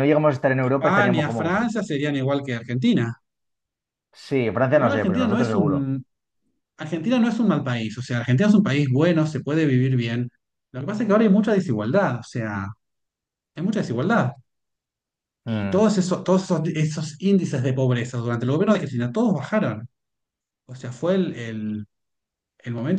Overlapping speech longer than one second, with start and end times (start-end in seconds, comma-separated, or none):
0.6-1.9, 4.7-5.9